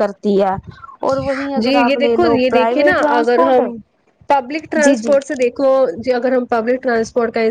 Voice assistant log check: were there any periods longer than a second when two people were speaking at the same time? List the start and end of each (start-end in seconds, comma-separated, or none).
1.6-3.6